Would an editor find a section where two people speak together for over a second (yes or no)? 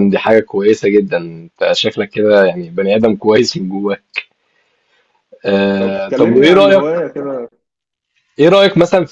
yes